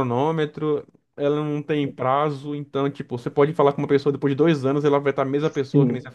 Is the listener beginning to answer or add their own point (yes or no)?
no